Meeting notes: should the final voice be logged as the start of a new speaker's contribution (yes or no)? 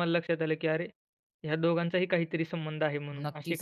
yes